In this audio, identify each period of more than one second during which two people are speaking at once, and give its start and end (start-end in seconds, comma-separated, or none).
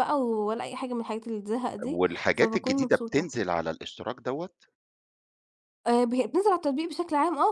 1.8-3.3